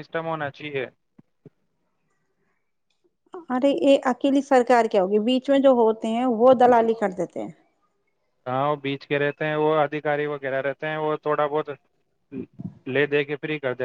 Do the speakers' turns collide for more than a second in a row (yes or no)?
no